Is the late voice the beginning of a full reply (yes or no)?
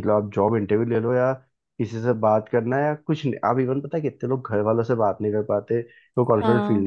no